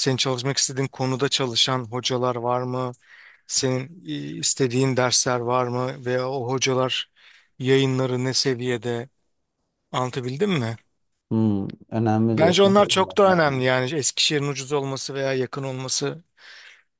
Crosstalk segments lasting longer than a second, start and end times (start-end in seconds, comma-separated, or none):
12.4-13.7